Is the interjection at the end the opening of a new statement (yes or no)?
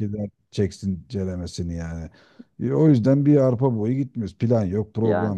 no